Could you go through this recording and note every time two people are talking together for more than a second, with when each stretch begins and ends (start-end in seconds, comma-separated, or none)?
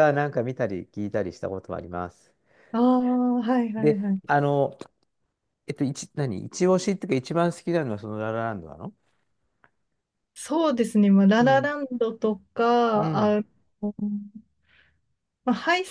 none